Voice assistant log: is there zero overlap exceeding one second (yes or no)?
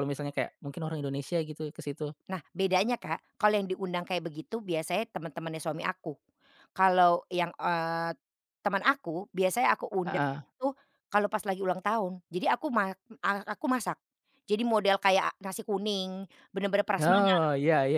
yes